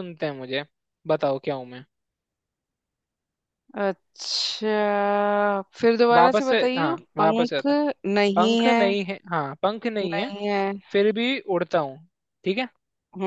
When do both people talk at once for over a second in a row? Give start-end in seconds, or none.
6.1-7.6